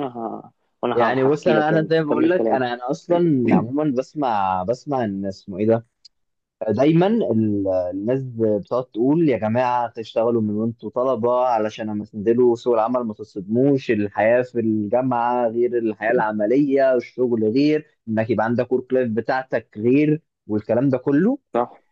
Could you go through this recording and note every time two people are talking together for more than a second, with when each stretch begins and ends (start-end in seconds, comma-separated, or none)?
0.9-2.8